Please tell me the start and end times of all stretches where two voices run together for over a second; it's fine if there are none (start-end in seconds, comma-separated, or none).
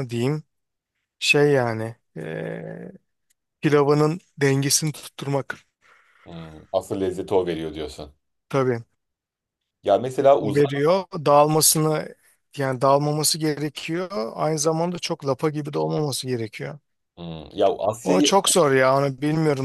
none